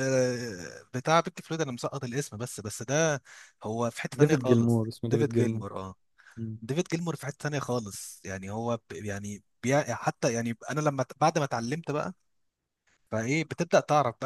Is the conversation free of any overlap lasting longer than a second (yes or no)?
no